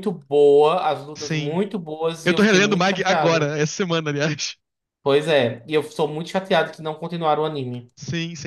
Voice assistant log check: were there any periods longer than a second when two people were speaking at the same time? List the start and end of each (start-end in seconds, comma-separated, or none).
2.2-3.5